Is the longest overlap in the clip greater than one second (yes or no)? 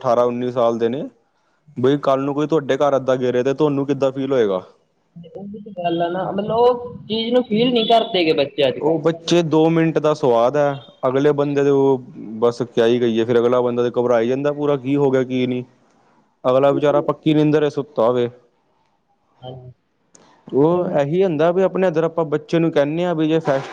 no